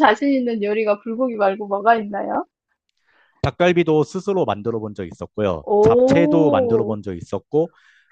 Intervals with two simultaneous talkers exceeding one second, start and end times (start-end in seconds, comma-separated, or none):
5.6-7.0